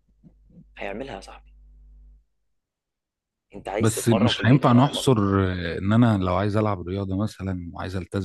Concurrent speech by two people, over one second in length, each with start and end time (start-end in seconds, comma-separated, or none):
3.8-5.1